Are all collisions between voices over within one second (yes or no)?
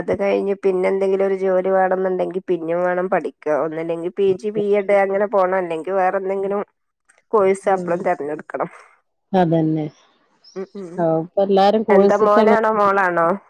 yes